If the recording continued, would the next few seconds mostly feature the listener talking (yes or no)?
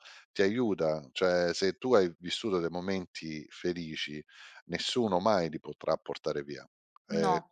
no